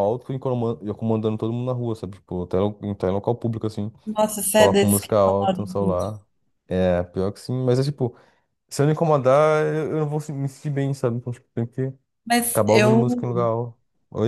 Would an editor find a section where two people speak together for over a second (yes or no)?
yes